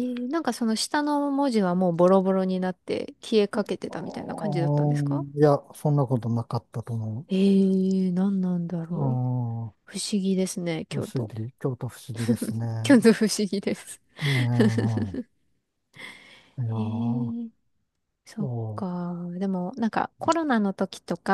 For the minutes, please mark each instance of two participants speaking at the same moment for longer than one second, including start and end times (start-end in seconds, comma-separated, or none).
3.9-5.2